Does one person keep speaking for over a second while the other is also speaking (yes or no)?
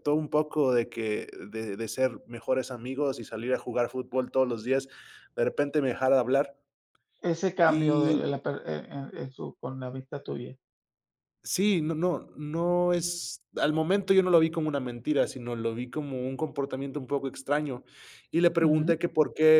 no